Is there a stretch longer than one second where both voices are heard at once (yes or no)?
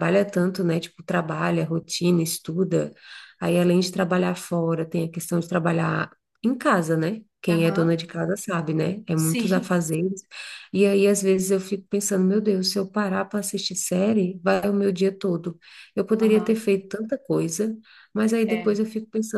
no